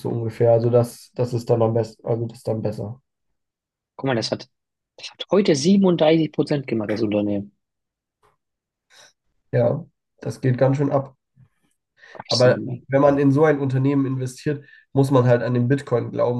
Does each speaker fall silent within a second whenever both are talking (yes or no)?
yes